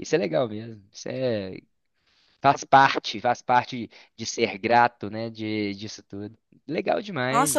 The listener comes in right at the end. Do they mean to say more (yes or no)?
yes